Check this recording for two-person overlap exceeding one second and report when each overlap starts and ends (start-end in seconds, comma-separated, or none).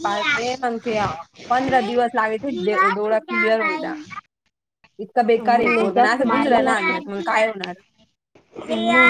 5.5-7.2